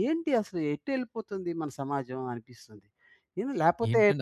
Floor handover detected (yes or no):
yes